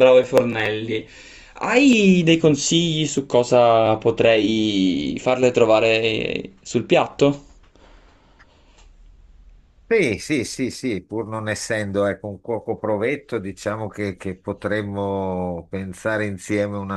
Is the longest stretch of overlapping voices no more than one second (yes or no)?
yes